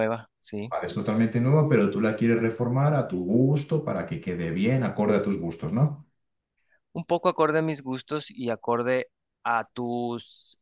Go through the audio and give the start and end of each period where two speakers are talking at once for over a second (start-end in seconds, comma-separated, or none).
none